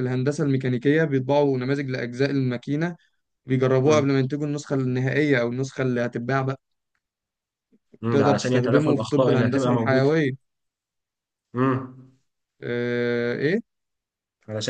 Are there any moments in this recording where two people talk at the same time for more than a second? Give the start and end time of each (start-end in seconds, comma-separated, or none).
8.1-10.1